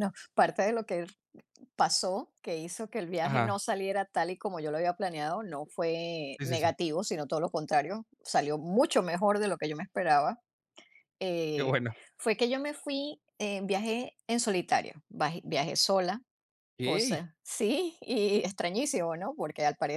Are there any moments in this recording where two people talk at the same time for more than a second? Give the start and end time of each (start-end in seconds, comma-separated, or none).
none